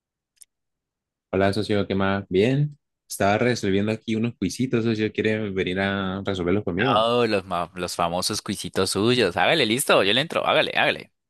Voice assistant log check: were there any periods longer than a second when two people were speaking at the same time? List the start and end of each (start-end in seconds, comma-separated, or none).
none